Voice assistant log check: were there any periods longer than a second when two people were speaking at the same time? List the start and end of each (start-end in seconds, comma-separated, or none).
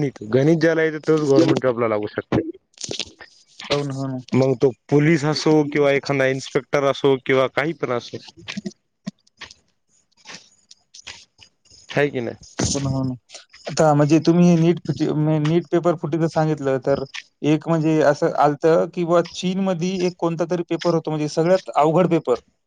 none